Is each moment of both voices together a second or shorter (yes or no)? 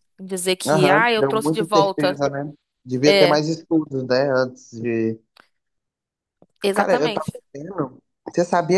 no